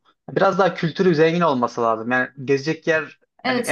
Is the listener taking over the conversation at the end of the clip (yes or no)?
no